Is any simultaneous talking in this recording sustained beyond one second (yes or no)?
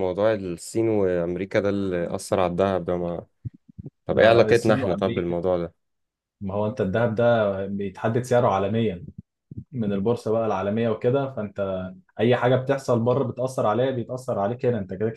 yes